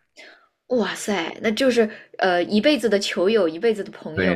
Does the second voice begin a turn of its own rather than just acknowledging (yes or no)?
yes